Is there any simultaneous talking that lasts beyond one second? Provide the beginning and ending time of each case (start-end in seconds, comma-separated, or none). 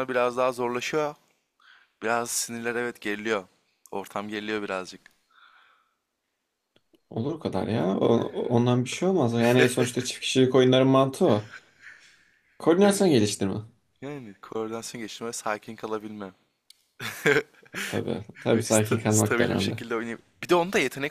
18.5-19.8